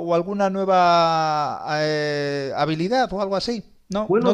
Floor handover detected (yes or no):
yes